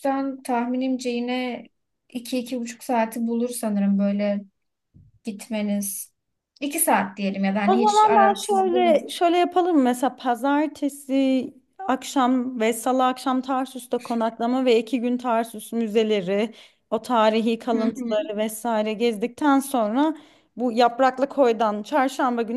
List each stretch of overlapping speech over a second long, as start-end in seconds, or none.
7.7-8.9